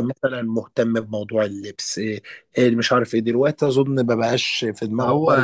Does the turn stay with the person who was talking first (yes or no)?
no